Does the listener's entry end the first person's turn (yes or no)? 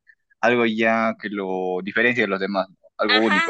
yes